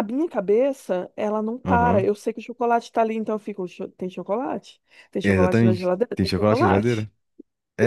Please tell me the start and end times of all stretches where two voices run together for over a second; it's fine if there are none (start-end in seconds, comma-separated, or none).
5.2-7.1